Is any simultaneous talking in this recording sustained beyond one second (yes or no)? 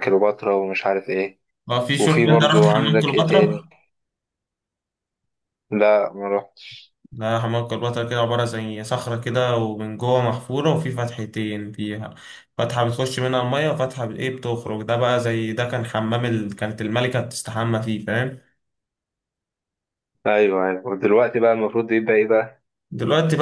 yes